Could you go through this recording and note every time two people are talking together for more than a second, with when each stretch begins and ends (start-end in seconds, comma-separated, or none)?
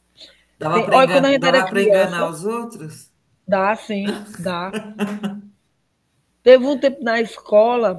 0.7-2.3